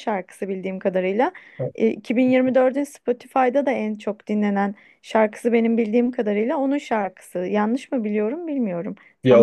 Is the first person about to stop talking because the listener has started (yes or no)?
yes